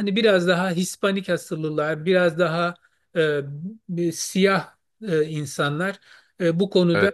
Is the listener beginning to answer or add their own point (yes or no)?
no